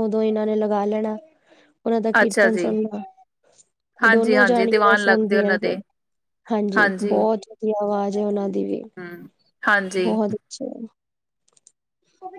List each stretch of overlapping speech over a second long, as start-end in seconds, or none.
4.1-5.8